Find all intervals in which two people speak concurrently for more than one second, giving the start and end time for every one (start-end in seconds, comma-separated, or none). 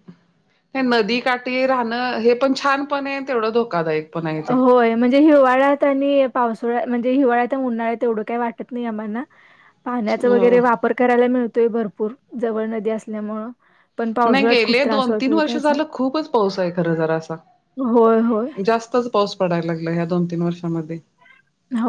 14.3-15.8